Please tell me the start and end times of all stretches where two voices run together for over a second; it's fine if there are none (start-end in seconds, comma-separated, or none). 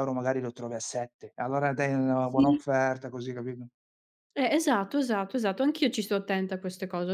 none